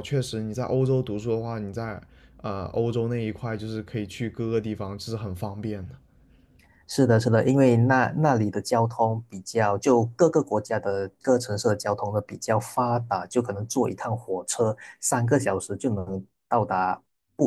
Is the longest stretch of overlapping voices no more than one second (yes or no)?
yes